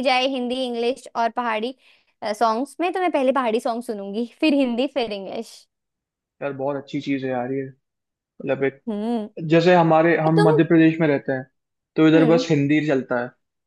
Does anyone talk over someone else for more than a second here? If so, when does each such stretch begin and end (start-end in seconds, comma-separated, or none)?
none